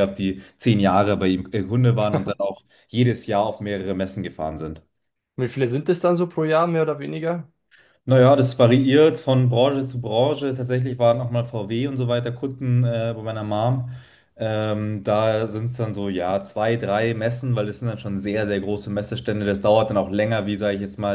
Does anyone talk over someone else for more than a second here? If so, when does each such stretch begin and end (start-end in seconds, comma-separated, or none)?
none